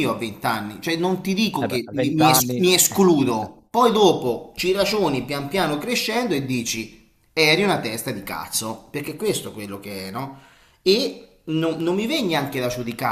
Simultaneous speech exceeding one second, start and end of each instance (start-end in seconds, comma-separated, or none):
1.6-3.5